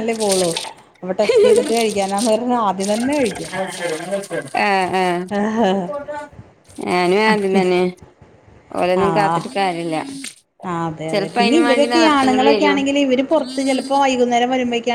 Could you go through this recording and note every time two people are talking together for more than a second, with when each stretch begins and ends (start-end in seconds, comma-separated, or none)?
11.1-12.8